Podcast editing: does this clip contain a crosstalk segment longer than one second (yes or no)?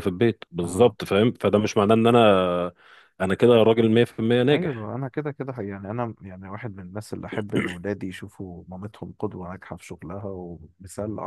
no